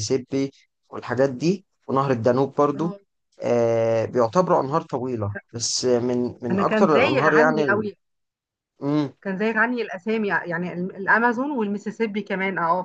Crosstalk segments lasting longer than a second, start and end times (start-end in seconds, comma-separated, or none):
6.5-7.8